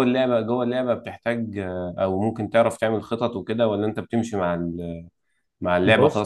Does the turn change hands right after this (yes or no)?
no